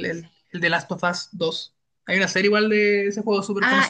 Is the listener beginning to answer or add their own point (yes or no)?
yes